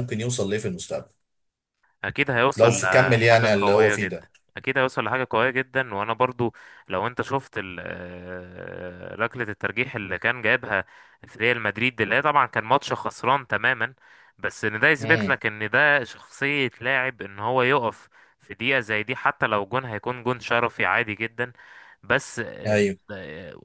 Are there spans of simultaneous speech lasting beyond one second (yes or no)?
yes